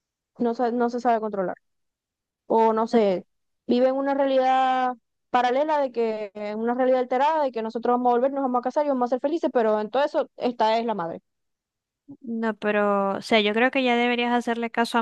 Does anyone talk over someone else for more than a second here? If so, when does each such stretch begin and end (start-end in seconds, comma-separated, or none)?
none